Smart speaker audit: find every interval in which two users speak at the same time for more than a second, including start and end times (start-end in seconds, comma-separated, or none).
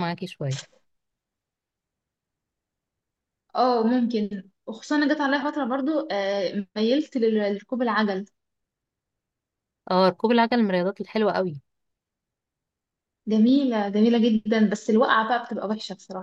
none